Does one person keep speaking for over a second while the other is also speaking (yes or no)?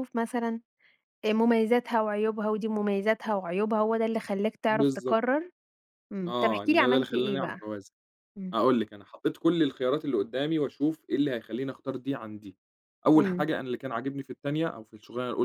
yes